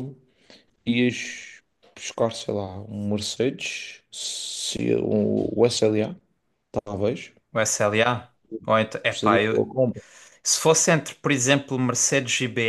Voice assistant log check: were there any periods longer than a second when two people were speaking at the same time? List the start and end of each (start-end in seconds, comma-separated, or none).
none